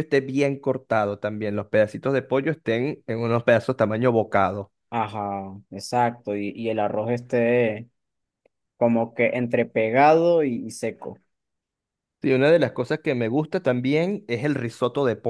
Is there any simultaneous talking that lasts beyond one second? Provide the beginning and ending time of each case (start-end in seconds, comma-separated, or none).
none